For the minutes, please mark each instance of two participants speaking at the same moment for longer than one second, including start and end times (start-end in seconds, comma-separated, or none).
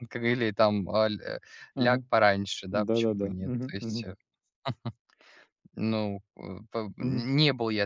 2.7-4.1